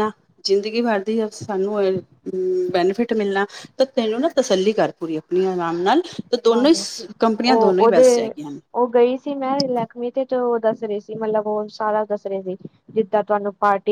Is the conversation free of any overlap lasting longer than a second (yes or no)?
yes